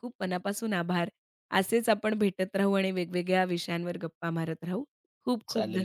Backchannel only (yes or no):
no